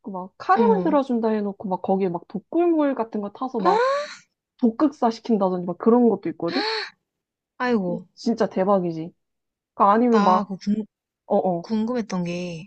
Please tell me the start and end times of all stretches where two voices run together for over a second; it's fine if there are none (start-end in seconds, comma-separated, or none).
none